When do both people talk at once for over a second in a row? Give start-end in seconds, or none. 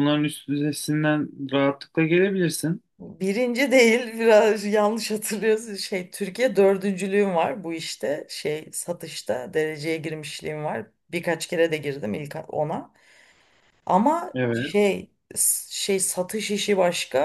none